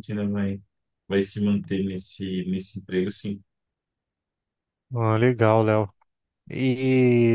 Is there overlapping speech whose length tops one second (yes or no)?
no